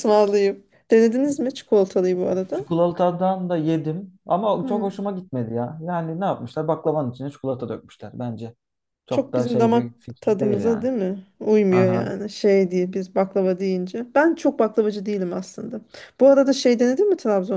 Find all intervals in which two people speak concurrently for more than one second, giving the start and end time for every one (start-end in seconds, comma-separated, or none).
9.1-10.9